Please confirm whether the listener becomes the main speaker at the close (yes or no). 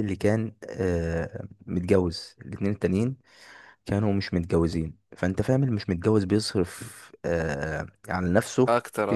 no